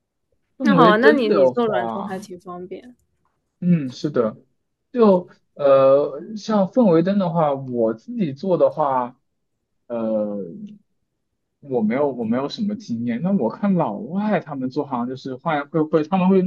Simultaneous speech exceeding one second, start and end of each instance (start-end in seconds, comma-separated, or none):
0.6-2.3